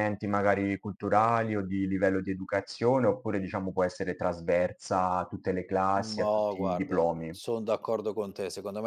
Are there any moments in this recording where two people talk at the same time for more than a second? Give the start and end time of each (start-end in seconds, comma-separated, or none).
5.9-7.3